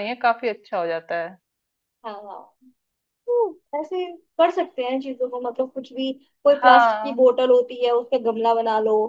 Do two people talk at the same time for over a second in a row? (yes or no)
no